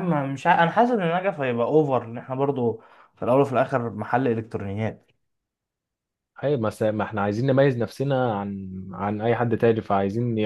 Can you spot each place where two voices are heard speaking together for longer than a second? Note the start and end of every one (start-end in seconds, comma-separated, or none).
none